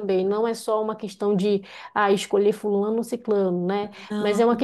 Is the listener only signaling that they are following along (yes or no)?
yes